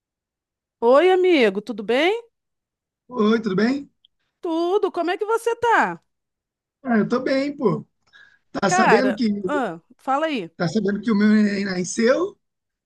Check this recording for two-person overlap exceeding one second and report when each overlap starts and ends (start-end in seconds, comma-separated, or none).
none